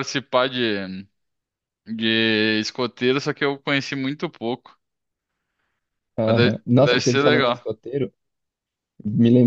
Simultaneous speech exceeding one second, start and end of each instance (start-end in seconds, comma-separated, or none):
6.2-7.7